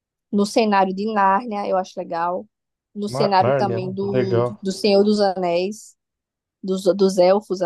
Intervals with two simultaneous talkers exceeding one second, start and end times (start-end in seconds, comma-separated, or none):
3.1-4.6